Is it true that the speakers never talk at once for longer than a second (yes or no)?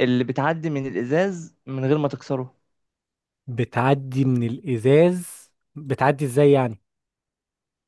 yes